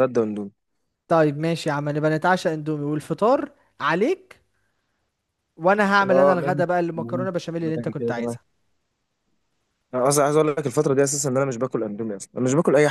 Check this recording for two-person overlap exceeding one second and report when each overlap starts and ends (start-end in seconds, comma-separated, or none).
6.0-8.4